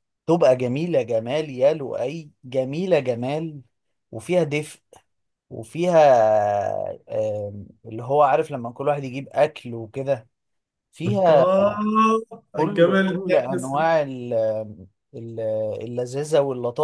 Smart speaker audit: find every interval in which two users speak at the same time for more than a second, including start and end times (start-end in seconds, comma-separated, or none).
12.6-13.8